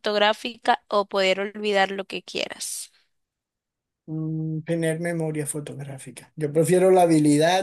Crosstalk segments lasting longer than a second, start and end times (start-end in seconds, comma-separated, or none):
none